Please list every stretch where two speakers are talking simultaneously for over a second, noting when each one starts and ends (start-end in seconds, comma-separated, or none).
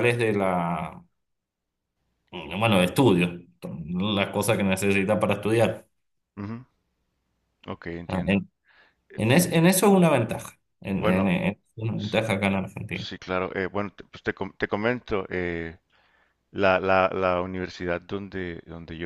none